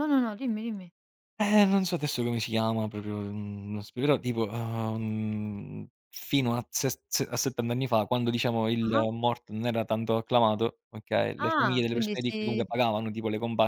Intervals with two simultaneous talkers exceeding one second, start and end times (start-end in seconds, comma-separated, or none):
11.4-12.6